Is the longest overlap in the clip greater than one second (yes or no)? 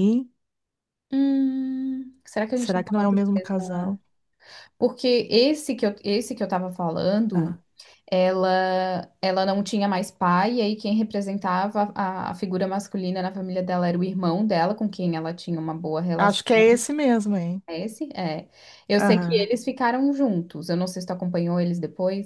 yes